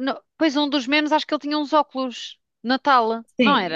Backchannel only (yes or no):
no